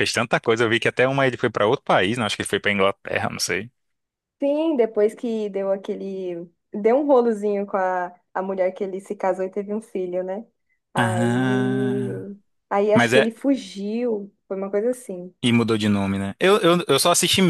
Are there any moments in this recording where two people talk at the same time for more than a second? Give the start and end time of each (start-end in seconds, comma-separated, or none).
10.9-12.2